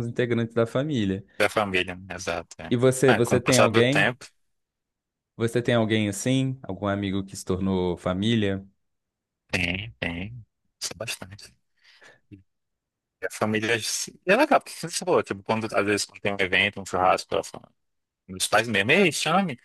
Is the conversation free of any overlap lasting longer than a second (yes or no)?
no